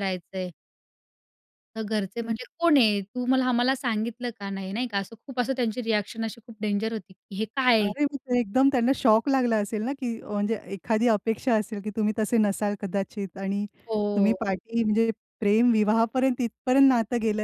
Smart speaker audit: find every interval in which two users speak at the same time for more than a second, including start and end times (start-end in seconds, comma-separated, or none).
none